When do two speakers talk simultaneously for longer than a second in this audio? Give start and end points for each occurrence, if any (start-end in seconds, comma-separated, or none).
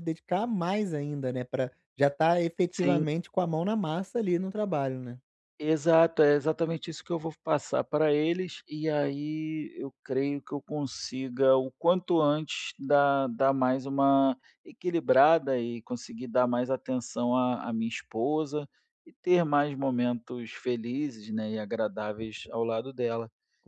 none